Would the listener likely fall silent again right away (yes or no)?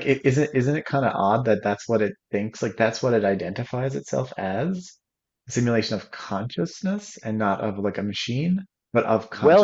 no